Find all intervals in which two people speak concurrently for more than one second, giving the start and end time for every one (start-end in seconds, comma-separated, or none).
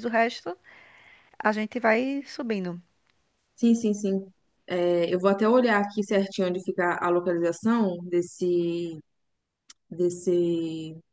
none